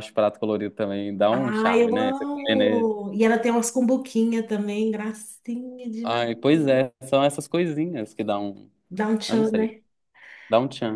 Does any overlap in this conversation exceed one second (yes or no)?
yes